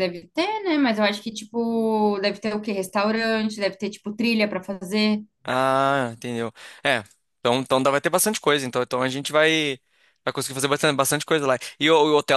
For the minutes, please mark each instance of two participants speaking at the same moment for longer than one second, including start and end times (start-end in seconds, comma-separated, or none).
none